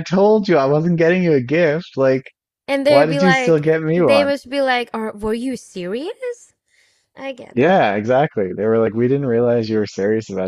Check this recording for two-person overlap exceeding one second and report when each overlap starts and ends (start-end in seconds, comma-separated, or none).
2.9-4.3